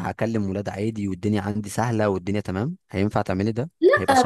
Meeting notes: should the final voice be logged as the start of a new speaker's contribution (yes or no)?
yes